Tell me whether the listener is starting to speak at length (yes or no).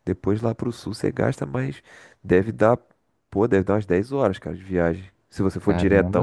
yes